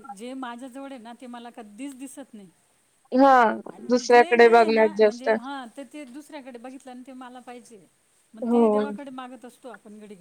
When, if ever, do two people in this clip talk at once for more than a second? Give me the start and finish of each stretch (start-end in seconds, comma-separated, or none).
3.9-5.3